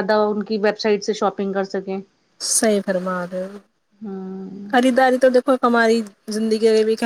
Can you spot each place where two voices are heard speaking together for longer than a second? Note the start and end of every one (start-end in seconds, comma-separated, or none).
none